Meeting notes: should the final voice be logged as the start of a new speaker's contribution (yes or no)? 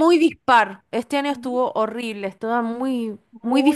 yes